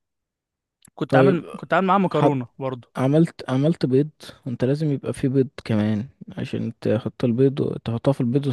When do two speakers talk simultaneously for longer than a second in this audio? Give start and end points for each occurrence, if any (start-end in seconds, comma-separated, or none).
none